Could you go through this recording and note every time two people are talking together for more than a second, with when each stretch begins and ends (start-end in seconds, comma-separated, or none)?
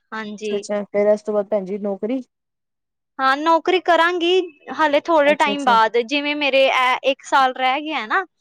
none